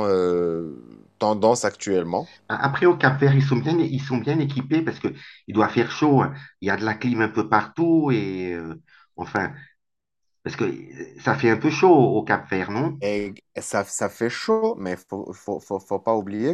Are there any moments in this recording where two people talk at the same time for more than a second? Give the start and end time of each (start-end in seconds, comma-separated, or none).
none